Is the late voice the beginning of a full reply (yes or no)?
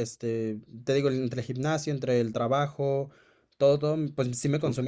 no